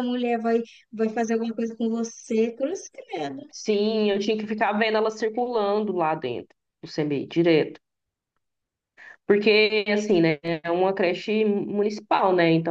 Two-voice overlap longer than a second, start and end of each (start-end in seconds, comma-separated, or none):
none